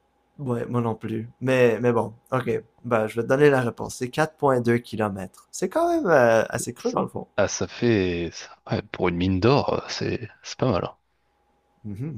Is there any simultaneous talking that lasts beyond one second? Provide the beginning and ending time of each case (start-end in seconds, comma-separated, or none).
none